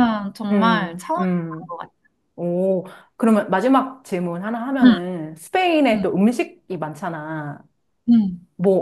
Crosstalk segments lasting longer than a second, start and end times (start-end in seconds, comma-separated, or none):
0.5-1.8